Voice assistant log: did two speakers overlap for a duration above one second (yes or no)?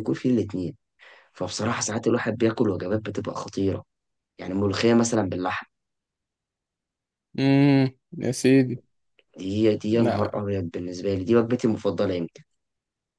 no